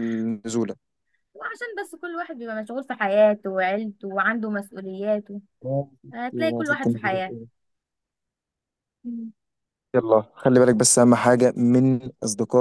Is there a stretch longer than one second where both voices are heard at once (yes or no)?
yes